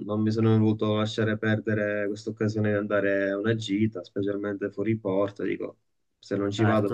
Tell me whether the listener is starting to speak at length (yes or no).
yes